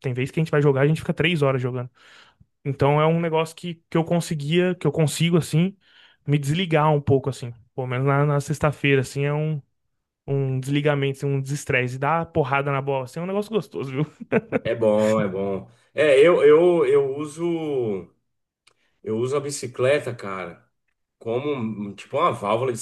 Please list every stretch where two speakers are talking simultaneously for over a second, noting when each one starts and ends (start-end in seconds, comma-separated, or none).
none